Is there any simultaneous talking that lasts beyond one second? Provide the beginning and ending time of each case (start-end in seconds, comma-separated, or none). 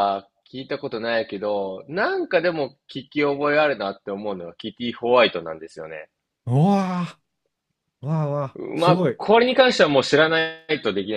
none